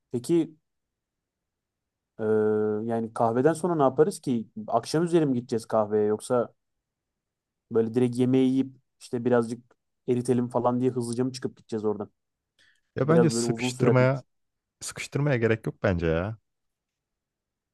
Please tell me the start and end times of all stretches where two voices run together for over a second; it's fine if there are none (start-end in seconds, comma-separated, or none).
13.0-14.2